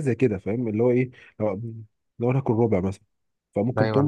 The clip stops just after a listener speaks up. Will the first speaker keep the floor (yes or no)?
yes